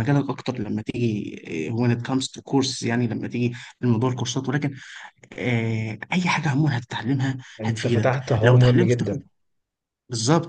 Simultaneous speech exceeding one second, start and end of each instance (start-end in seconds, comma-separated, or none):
7.6-9.2